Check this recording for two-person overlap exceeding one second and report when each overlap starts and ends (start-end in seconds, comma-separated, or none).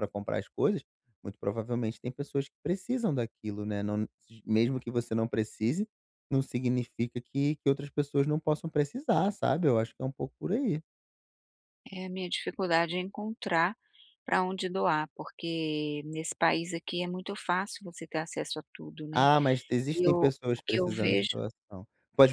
19.9-21.4